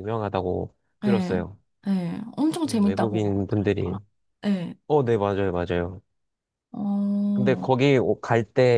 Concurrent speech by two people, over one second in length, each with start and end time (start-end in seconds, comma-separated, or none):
2.7-4.0